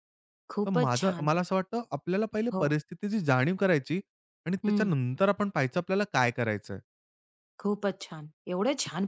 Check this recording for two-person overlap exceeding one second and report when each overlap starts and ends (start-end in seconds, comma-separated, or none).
none